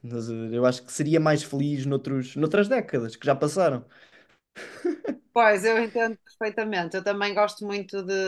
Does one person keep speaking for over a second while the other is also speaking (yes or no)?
no